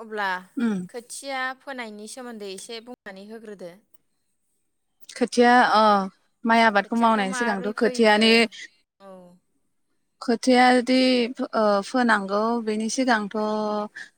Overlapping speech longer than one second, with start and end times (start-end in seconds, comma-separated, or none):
6.8-8.2